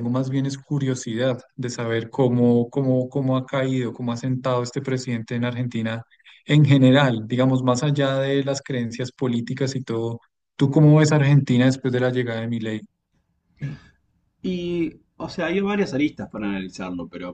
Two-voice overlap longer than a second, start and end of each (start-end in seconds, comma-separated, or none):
none